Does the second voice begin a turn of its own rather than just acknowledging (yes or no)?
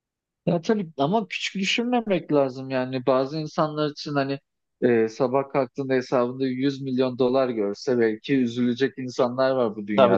yes